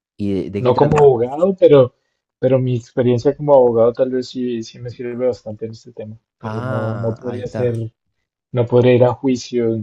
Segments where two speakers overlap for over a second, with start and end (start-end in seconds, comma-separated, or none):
6.4-7.7